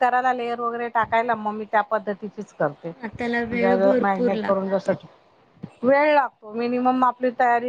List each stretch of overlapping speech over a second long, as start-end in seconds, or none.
3.0-4.9